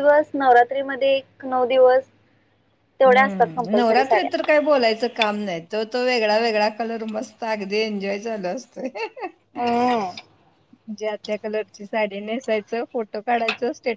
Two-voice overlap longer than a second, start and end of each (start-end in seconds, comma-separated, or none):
3.1-4.3